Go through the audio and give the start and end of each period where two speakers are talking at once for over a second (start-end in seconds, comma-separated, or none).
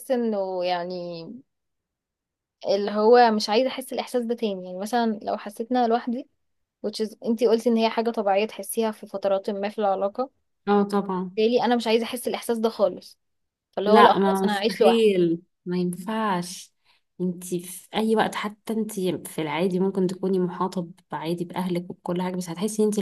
13.8-15.1